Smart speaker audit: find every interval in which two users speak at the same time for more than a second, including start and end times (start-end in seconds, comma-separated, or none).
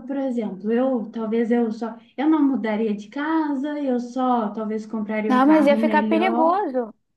5.3-6.7